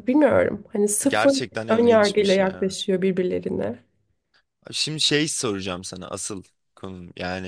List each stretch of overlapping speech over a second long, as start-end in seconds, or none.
1.1-2.8